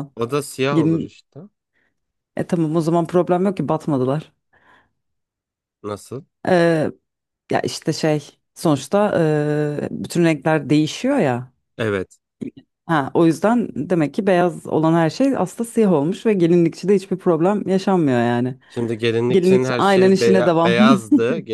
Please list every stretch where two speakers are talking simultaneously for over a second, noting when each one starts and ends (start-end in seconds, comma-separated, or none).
19.3-20.8